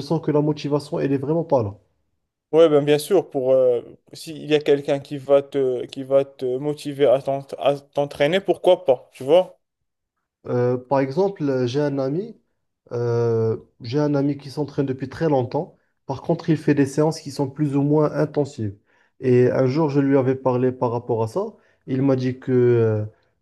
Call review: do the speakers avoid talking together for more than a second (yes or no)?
yes